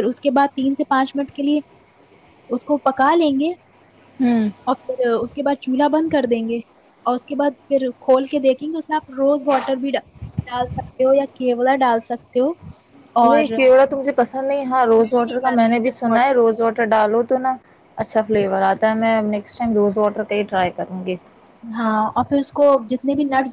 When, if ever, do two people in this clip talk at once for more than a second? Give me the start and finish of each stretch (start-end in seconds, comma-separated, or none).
14.8-16.3